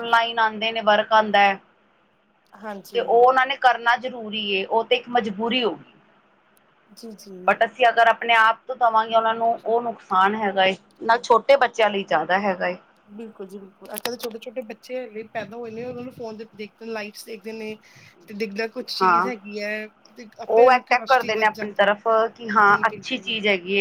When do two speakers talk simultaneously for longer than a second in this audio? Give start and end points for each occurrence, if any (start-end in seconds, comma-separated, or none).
20.5-21.9